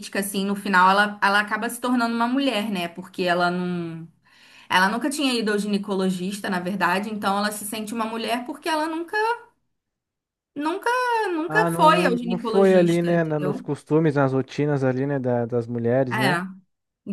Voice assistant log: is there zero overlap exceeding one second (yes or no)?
no